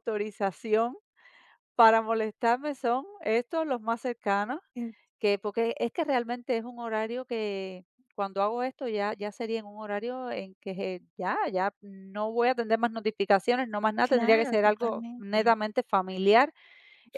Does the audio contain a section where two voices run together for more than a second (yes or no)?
yes